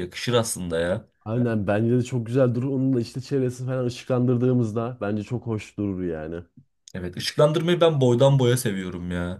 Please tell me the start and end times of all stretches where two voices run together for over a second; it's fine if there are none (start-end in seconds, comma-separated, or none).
none